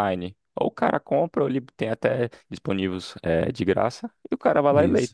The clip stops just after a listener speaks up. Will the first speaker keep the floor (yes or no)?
yes